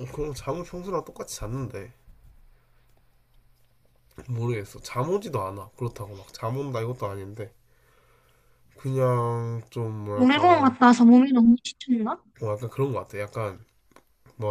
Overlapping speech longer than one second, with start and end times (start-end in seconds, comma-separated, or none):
none